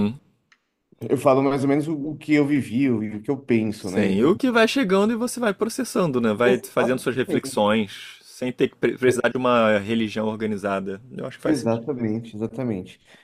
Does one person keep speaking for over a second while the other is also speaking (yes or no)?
yes